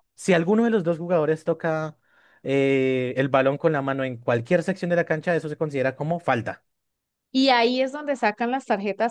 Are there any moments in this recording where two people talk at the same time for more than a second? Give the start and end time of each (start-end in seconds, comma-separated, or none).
none